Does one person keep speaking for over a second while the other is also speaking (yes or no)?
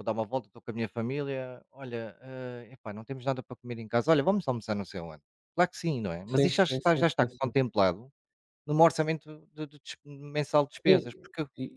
yes